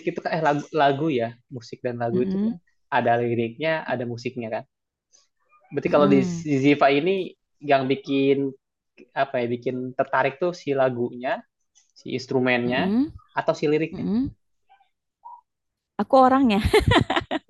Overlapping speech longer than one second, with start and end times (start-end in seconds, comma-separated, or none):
none